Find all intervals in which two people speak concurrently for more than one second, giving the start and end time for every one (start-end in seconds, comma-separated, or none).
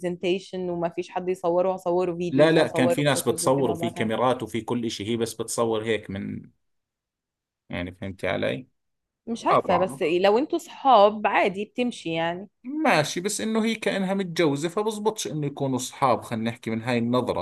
2.3-4.3